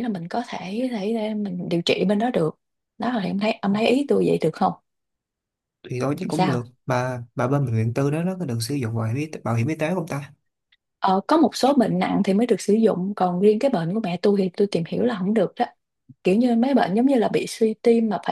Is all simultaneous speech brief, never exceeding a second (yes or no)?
yes